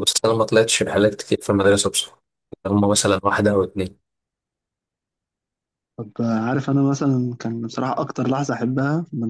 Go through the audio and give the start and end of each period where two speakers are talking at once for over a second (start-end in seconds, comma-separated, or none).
none